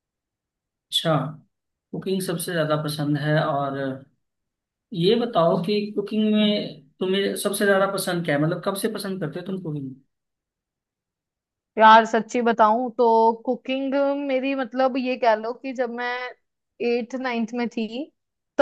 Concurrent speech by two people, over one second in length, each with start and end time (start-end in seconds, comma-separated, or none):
none